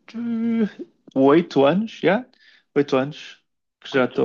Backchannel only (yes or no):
yes